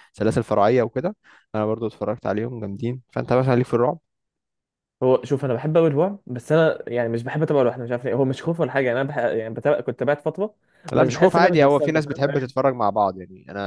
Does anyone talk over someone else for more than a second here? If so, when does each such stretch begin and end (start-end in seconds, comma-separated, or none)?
10.9-12.7